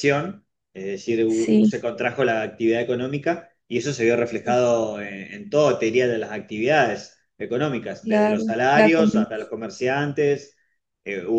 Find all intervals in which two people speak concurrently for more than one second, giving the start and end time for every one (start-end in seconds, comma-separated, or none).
8.0-9.3